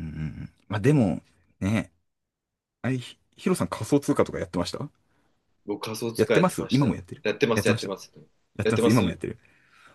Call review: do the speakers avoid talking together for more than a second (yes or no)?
no